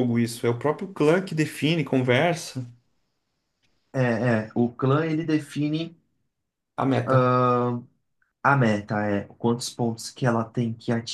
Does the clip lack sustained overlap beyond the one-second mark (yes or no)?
yes